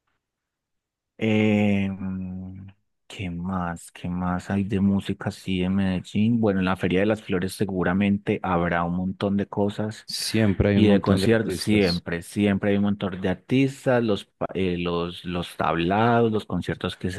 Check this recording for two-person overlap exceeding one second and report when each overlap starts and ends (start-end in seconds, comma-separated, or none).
10.8-12.0